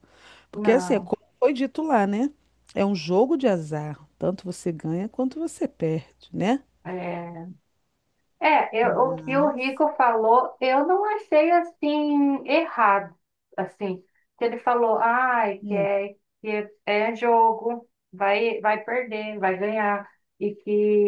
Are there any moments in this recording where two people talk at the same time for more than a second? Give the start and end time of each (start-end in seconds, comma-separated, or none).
none